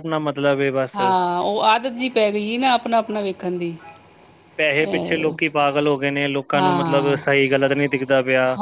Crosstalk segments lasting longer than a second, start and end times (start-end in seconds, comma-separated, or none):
none